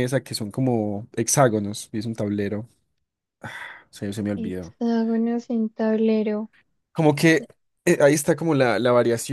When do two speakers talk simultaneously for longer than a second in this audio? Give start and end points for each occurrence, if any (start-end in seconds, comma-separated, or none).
none